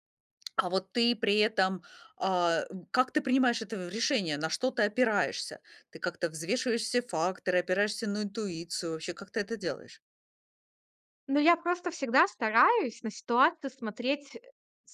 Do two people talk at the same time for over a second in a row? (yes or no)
no